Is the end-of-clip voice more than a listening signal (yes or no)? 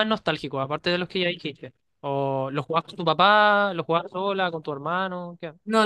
yes